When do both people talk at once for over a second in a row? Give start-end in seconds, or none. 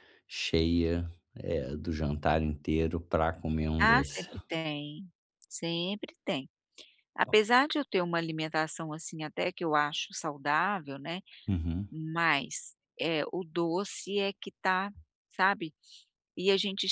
none